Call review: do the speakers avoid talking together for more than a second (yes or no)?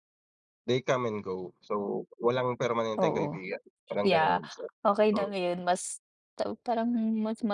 yes